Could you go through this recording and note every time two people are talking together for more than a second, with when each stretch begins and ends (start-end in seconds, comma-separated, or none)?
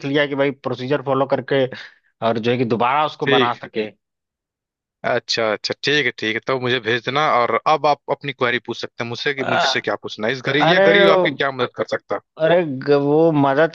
none